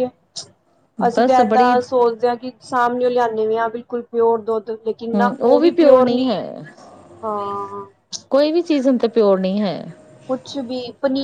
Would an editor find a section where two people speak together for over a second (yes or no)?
no